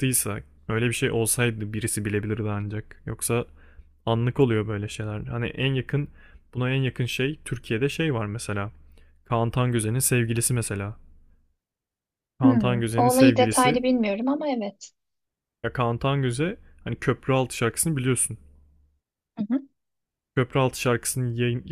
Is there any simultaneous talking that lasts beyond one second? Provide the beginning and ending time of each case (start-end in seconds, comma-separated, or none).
12.4-13.8